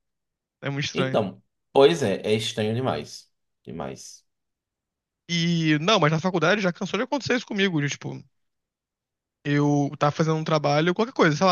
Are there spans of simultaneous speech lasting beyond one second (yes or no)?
no